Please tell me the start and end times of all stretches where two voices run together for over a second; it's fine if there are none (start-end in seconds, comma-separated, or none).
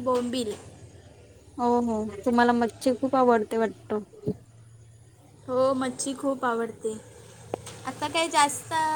none